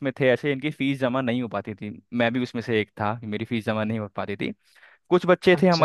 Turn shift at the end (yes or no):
no